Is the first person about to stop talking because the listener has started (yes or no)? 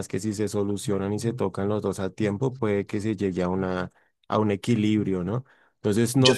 no